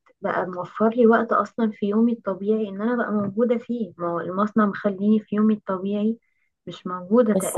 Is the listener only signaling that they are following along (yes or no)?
yes